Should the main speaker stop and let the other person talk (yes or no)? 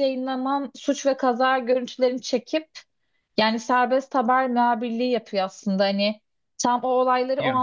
no